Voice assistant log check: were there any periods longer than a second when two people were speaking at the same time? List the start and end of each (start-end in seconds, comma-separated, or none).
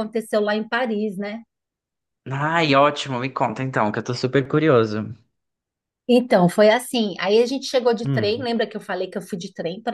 none